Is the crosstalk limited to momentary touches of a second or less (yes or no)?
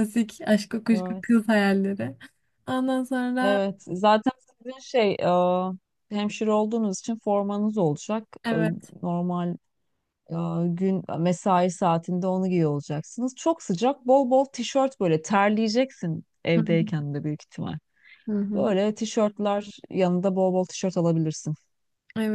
yes